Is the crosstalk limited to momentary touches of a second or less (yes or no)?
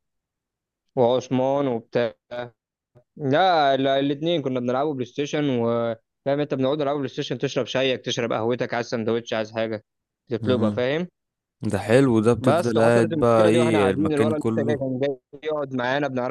no